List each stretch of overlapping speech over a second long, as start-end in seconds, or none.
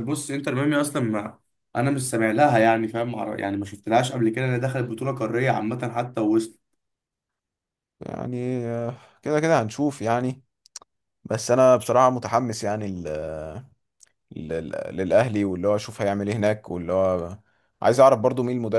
none